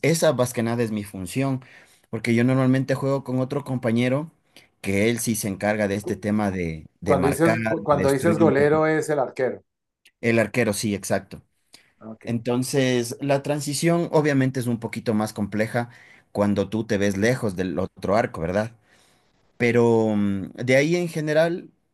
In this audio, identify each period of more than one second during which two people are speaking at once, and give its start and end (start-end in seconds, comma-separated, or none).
7.0-8.8